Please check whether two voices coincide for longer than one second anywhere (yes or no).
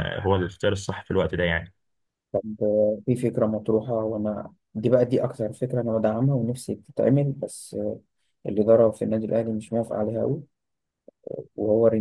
no